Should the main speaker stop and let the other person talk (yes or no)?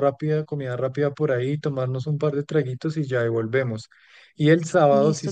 no